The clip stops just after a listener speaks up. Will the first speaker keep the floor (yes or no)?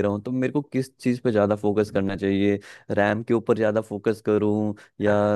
yes